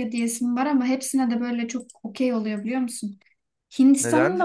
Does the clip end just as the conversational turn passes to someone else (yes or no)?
yes